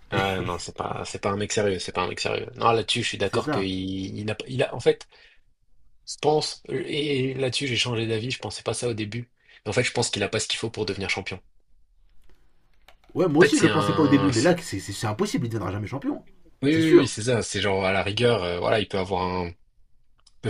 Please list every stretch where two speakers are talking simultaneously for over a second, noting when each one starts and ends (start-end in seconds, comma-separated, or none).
13.3-14.6